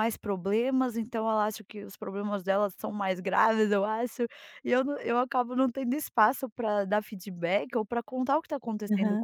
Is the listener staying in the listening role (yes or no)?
yes